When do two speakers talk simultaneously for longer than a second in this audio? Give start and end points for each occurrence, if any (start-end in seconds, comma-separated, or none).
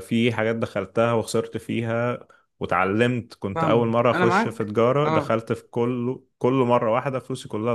3.5-5.4